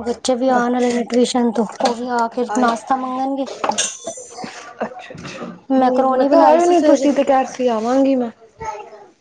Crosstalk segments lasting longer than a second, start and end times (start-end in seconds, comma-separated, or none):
5.8-7.1